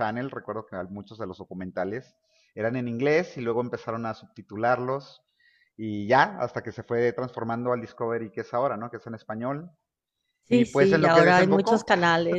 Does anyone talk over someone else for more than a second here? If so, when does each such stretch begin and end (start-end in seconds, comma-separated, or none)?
10.5-11.9